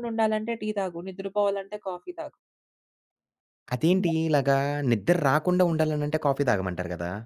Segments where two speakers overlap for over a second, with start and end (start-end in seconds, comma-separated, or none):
none